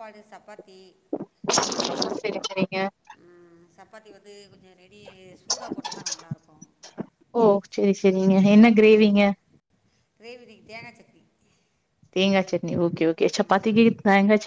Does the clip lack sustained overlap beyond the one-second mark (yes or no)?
yes